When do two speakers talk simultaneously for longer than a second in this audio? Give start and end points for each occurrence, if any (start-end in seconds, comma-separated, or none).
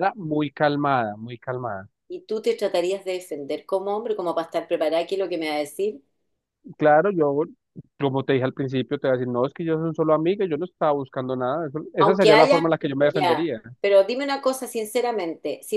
12.0-13.6